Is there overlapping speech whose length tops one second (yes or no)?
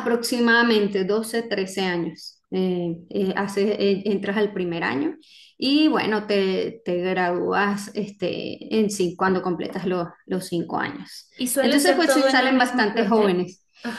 yes